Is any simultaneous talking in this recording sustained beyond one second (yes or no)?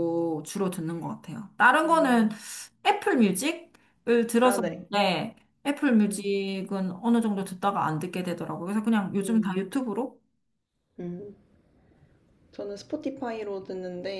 no